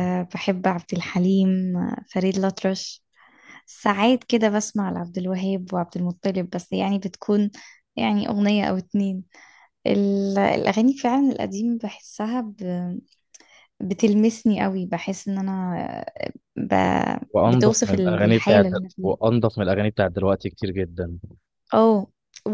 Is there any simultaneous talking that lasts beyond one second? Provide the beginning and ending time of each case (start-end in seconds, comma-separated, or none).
17.4-19.1